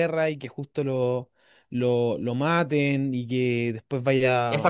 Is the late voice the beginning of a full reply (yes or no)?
yes